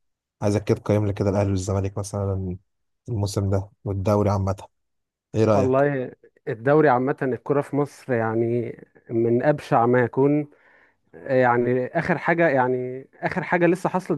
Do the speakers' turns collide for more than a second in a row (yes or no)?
no